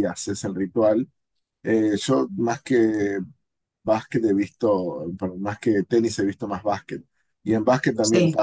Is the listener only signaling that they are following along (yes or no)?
yes